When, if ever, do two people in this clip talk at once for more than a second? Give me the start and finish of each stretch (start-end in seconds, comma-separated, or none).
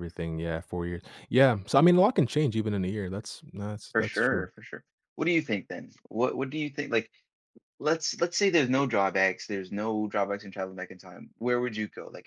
none